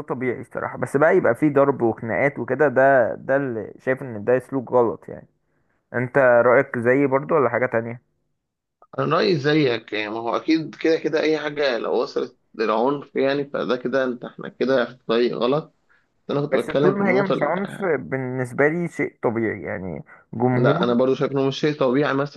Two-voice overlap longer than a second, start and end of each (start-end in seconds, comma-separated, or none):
16.5-17.8